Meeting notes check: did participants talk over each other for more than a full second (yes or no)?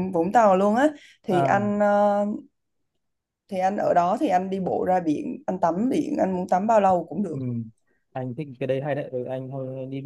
no